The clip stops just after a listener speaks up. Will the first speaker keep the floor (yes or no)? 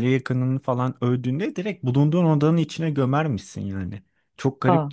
yes